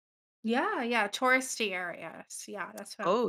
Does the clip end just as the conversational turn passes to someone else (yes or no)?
yes